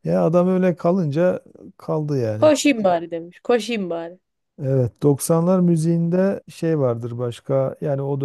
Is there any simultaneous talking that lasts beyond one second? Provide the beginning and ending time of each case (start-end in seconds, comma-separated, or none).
none